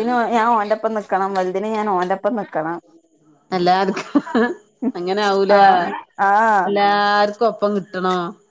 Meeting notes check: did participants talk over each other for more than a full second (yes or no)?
no